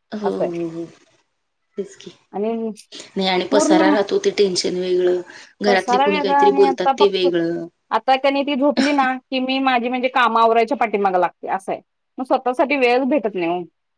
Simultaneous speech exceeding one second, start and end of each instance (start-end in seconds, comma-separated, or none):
none